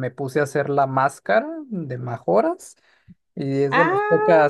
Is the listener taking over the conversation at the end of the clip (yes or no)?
no